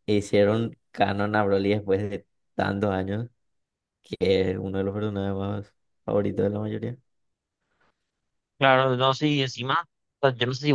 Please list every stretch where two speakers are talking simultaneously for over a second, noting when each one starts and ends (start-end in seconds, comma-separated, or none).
none